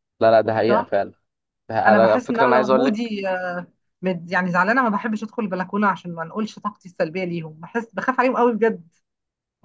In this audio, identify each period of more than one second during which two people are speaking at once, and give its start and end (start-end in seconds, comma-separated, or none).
1.9-3.1